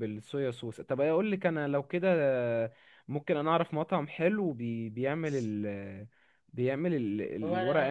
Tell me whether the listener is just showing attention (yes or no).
yes